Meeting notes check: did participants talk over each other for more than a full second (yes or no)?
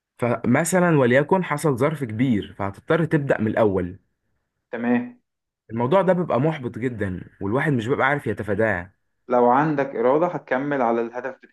no